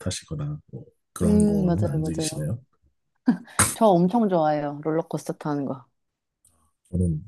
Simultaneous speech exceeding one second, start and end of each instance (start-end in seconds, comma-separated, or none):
1.2-2.5